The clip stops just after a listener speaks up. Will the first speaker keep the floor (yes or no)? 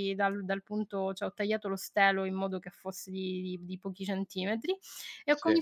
yes